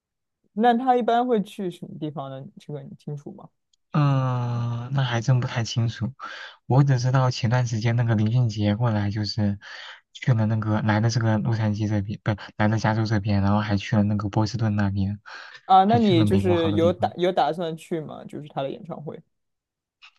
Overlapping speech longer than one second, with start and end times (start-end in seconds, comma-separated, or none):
15.9-17.1